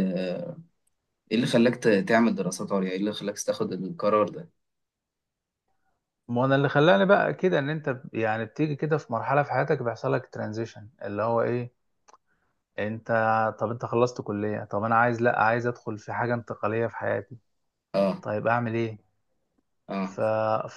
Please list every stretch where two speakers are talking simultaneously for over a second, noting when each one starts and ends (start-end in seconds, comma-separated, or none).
none